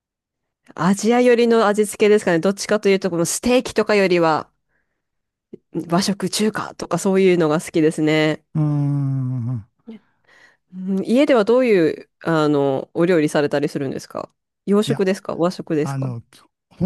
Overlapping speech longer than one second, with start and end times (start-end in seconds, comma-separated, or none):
none